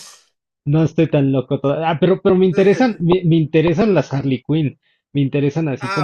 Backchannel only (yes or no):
no